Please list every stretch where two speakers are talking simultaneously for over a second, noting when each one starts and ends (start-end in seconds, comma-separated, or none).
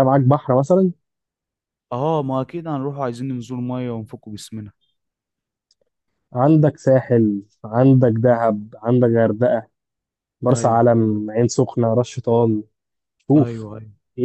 none